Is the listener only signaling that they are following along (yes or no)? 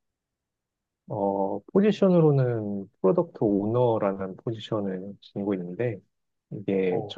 yes